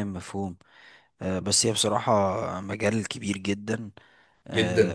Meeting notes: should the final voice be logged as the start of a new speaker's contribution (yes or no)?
no